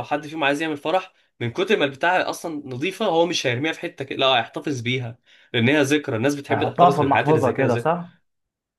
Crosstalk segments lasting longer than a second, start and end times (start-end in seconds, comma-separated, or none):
6.5-7.9